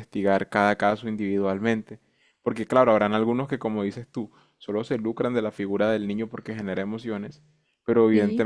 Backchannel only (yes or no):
yes